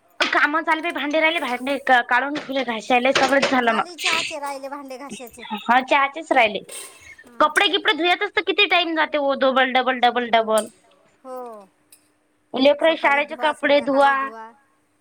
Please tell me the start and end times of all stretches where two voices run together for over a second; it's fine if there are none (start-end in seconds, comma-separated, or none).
12.9-14.1